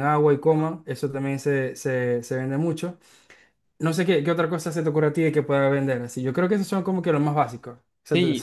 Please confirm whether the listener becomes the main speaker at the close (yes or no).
yes